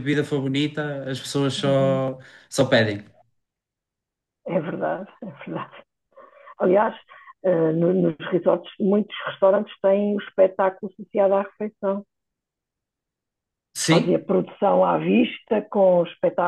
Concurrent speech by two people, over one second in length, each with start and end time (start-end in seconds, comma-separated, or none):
none